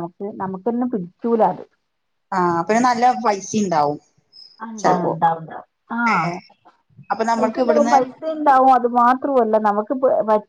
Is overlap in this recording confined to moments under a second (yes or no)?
yes